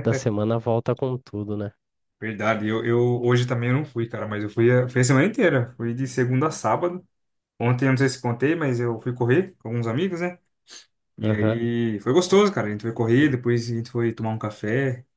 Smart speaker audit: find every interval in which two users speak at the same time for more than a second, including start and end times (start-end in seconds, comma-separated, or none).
none